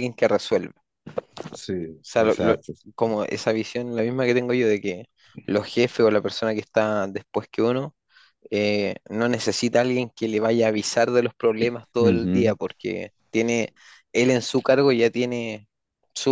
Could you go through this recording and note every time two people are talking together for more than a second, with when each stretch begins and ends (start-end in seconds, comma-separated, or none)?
none